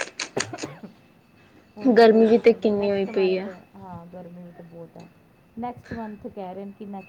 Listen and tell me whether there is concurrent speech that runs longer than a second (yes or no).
yes